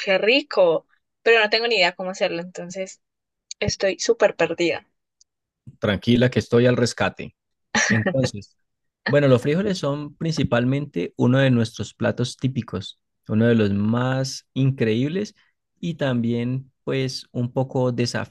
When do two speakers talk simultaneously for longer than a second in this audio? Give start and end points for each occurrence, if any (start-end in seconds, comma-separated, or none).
none